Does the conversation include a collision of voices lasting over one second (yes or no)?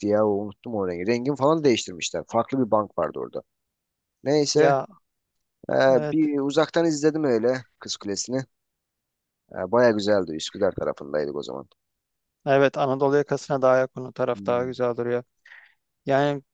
no